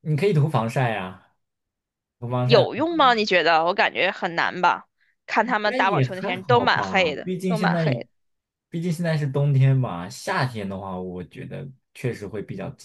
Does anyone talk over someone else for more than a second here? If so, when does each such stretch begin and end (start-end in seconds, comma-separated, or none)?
5.4-7.8